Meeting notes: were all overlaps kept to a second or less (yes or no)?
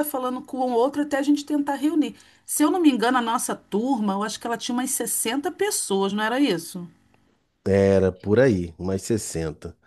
yes